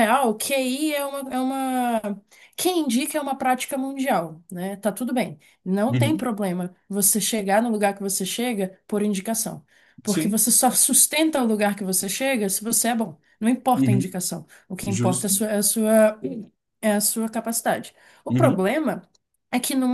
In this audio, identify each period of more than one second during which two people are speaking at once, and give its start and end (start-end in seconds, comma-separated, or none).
none